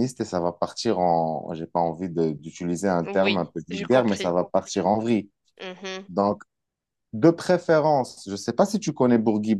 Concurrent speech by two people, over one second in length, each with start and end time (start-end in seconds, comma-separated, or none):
3.0-4.3